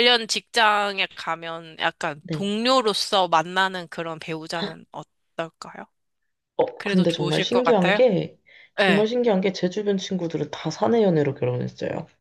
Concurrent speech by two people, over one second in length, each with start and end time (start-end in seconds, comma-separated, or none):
6.8-8.0